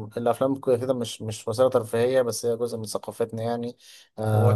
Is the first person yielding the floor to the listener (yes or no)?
yes